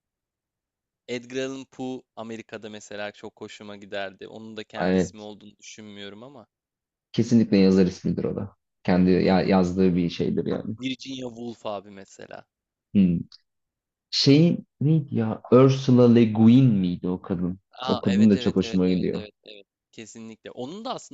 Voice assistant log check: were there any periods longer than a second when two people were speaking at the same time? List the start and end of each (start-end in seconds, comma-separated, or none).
17.7-19.3